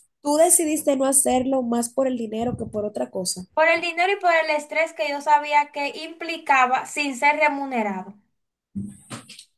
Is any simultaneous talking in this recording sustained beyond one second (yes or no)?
no